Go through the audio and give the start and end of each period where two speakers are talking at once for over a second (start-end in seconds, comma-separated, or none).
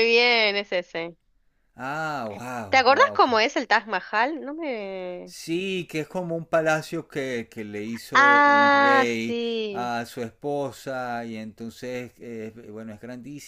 8.1-9.9